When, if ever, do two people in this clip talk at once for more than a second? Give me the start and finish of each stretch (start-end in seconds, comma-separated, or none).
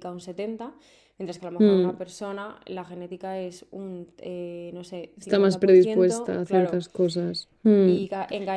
5.2-6.8